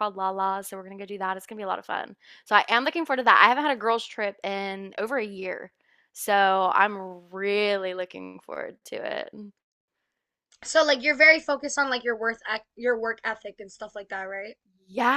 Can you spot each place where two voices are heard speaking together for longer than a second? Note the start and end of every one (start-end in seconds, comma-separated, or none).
none